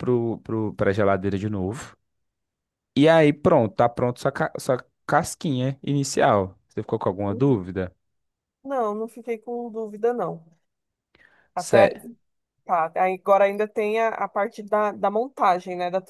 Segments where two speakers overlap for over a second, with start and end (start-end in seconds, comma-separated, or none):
none